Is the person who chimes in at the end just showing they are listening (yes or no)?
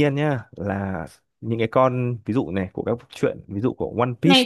no